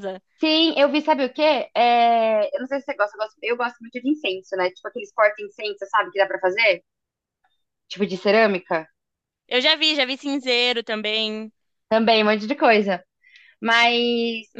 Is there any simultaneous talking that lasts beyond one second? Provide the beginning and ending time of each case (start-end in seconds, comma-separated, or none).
none